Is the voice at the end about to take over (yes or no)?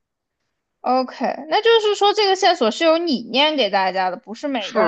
yes